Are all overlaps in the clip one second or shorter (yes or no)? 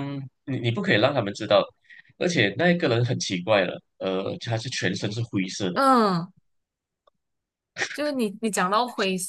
yes